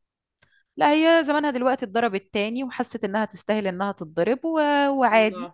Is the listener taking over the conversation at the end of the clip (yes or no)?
no